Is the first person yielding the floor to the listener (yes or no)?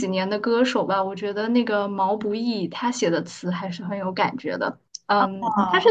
no